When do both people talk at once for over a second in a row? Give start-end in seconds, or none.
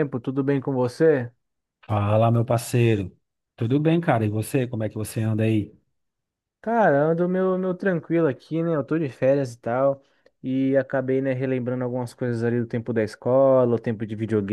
none